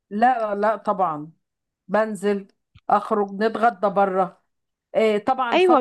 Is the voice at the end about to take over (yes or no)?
yes